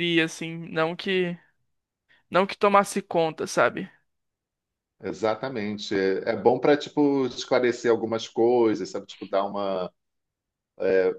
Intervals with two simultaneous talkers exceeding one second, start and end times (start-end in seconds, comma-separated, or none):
none